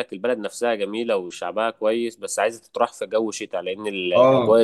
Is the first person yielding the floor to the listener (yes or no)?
yes